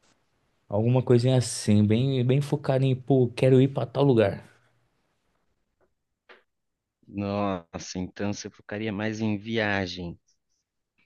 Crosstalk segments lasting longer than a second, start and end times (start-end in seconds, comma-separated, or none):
none